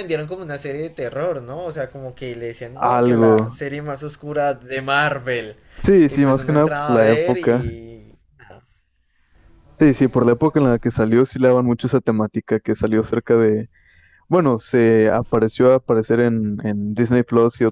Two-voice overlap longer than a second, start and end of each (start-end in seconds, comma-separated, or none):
6.1-7.6